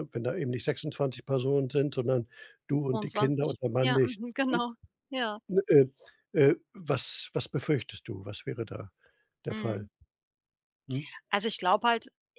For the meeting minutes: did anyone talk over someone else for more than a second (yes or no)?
yes